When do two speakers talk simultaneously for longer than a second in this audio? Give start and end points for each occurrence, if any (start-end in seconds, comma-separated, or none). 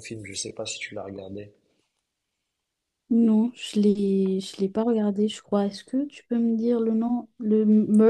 none